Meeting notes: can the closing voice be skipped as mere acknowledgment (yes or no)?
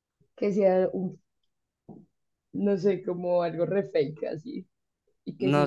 no